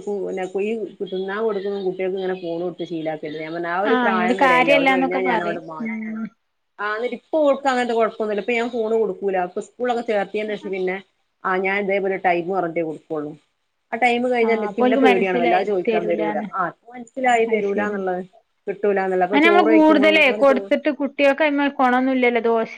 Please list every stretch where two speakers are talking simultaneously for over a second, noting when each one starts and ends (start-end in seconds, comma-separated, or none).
3.9-6.2, 14.3-16.5